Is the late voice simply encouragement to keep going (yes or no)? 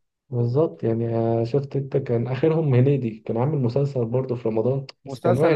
no